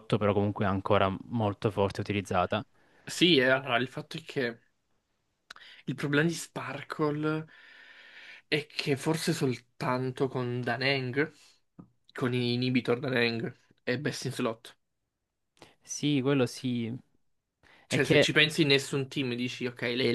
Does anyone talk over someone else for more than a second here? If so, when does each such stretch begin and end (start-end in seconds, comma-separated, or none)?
none